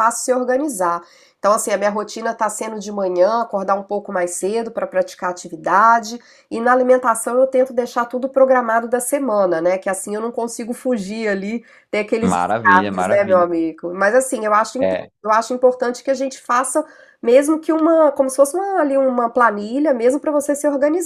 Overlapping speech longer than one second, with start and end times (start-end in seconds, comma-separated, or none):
12.2-13.5